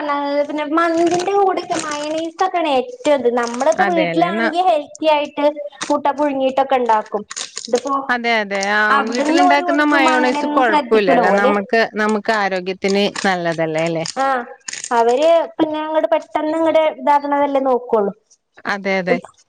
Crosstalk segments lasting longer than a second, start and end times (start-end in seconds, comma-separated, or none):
9.5-11.5